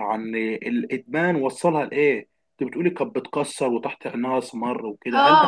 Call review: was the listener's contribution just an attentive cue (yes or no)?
no